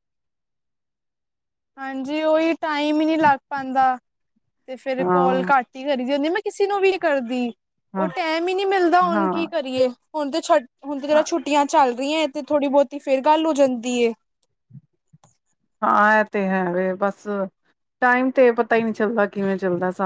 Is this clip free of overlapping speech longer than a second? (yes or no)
yes